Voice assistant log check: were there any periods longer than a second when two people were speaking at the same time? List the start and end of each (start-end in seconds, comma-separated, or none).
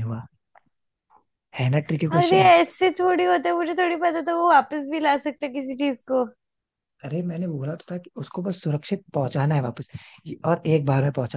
none